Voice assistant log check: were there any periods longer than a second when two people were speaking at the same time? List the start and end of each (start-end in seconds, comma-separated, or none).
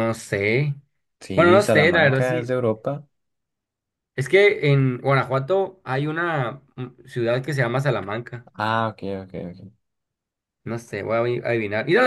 1.4-2.5